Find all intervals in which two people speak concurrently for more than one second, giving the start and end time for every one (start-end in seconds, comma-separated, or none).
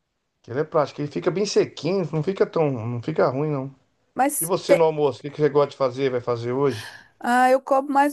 none